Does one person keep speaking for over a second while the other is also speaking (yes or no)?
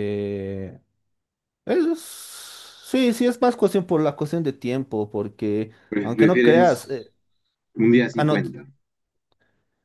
yes